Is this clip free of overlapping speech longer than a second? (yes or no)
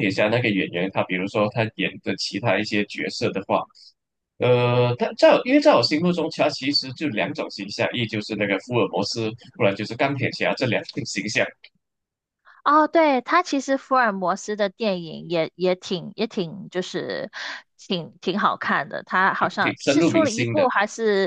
no